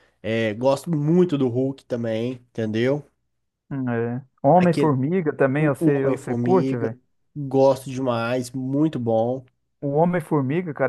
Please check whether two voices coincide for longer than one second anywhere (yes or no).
yes